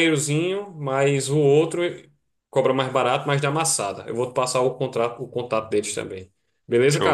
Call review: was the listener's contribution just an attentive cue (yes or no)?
no